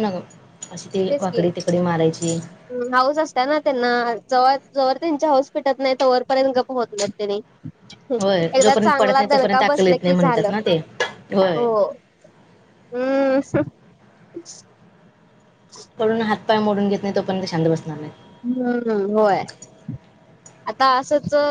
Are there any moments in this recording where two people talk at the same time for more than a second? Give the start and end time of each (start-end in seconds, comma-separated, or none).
8.5-10.5